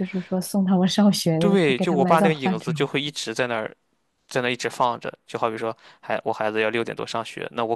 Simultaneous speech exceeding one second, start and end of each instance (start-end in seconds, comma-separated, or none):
1.4-2.9